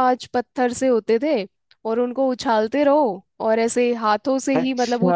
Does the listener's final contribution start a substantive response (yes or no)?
yes